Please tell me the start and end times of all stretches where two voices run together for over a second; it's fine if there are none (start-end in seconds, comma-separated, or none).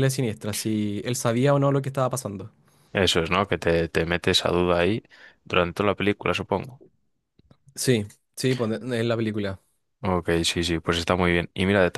none